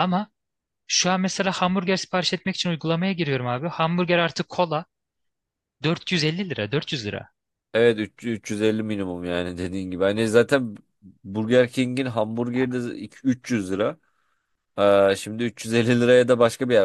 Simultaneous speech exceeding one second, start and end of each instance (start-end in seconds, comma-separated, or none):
none